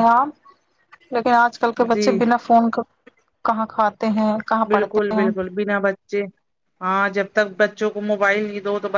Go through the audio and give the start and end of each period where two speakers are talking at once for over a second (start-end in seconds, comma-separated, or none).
none